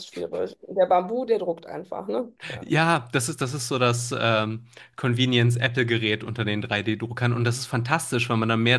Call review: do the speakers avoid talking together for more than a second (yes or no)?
yes